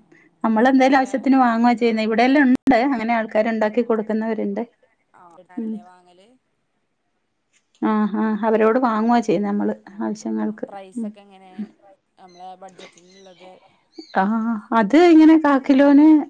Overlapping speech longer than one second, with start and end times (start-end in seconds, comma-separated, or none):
none